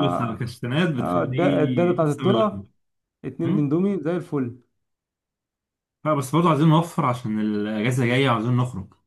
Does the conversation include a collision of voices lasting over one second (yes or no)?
yes